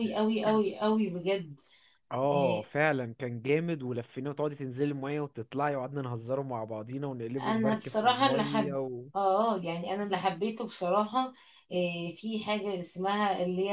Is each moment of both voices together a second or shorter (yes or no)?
no